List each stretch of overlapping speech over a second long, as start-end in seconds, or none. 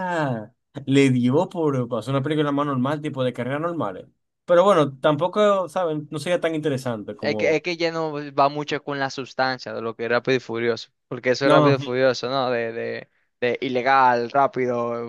none